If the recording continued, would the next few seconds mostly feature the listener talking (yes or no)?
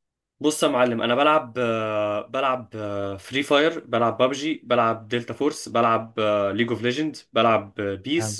no